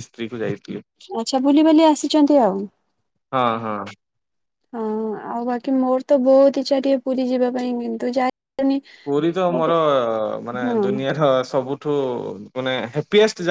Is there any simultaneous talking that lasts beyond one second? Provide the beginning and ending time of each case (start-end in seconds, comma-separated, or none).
none